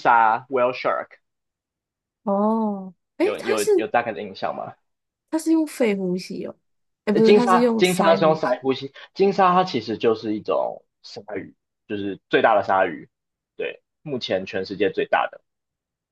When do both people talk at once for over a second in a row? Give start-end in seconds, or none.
7.1-8.6